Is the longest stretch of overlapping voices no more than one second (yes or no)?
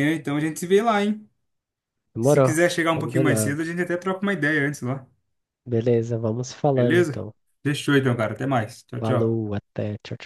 no